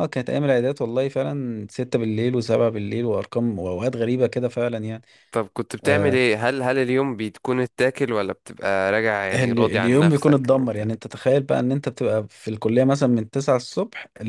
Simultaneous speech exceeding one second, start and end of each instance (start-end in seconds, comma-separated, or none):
9.3-10.8